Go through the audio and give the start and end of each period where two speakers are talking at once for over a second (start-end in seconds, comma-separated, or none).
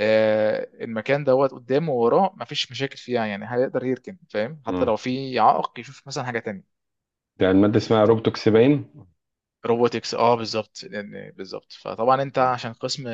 none